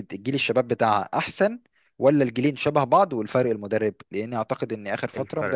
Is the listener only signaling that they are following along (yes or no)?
yes